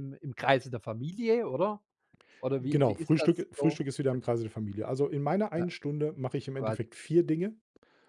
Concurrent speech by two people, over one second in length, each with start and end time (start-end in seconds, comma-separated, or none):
2.6-3.8